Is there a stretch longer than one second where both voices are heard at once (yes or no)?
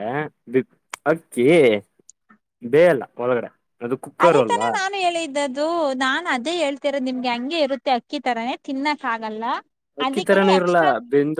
no